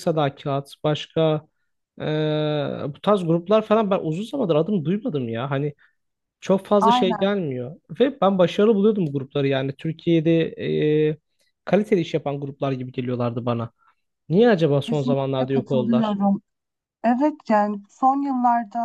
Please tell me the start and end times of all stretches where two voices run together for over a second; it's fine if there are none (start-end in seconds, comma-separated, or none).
14.8-16.2